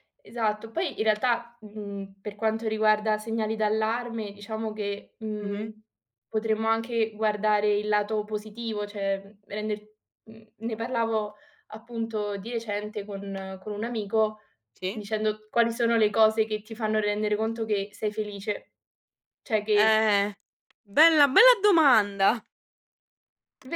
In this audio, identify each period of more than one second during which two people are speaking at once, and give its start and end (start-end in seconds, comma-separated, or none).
none